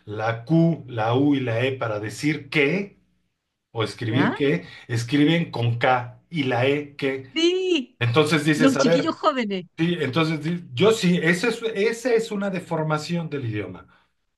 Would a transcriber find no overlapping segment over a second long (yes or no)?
yes